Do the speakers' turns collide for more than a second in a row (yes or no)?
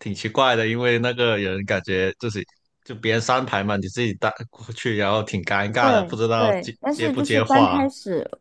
yes